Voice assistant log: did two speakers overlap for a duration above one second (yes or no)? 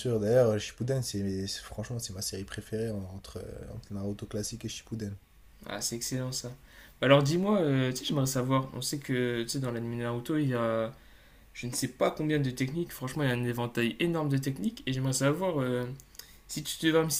no